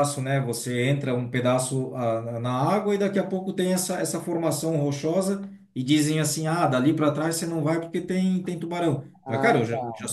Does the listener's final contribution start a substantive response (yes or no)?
no